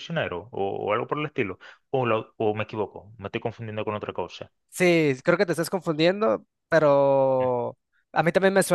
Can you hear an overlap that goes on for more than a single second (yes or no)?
no